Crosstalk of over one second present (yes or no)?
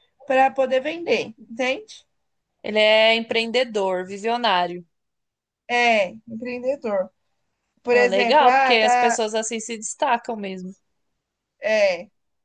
yes